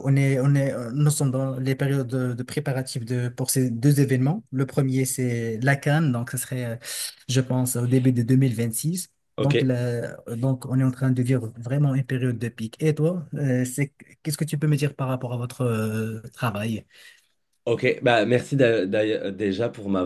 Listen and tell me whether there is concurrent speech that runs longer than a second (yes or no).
no